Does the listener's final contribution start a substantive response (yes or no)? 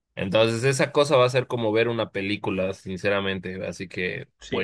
yes